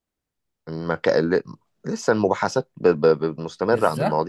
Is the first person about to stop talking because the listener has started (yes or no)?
yes